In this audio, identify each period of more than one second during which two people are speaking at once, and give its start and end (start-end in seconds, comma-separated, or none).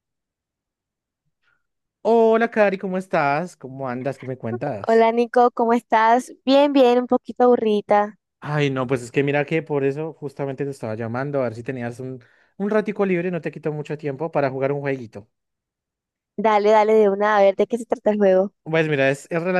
none